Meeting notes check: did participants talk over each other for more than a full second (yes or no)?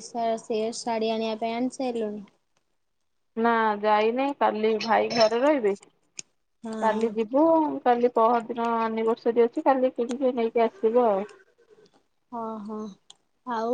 no